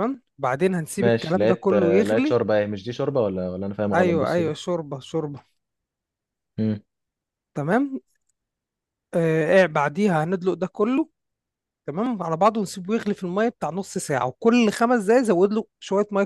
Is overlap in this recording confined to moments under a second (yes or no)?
no